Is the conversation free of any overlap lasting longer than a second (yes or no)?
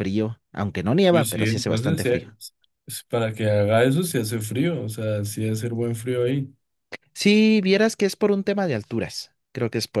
no